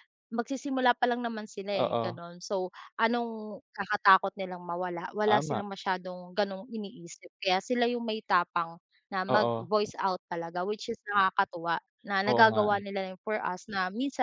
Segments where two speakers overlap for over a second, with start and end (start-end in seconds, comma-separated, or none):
none